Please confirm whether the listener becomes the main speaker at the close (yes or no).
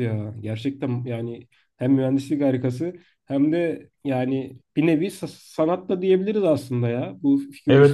yes